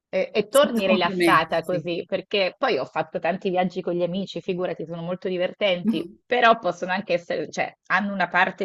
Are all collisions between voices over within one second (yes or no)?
no